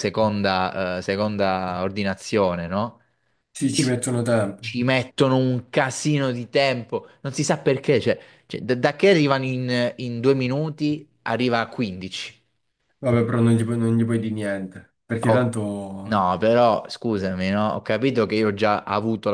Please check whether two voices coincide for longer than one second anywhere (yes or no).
no